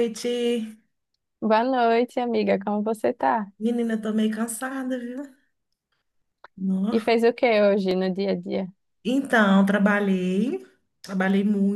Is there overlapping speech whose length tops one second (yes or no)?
no